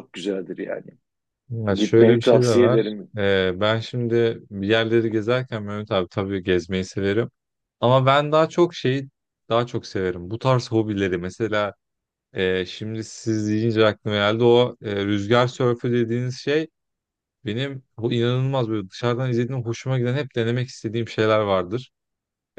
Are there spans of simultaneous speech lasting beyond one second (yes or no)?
yes